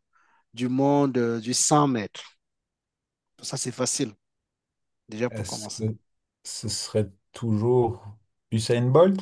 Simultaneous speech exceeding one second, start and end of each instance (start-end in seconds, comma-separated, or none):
none